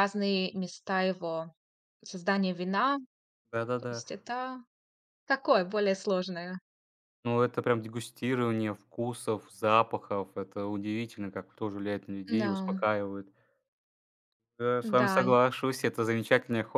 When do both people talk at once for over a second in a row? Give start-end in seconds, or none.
none